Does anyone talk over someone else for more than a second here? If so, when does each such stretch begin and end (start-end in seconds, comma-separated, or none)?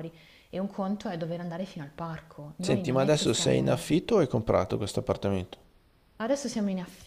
2.6-3.8